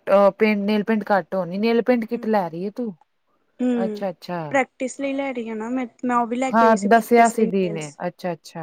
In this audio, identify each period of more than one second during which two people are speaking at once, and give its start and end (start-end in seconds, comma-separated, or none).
6.5-8.0